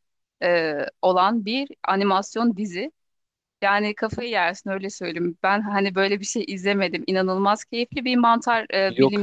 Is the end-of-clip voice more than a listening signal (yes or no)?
no